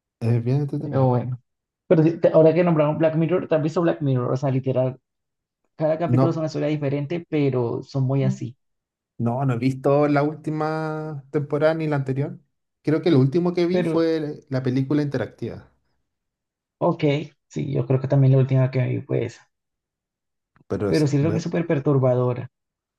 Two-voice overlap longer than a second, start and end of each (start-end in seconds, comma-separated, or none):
none